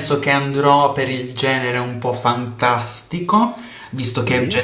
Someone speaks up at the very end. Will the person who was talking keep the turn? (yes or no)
yes